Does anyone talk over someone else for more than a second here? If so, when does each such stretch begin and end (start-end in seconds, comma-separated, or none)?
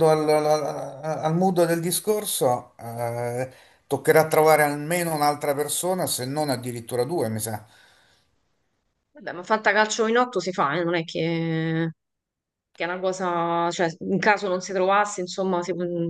none